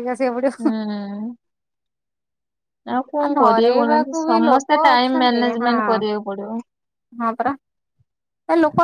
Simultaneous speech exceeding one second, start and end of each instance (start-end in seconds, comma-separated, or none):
3.4-5.7